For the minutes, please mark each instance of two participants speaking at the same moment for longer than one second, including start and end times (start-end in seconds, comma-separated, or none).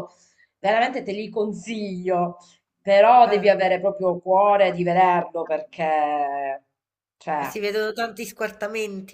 none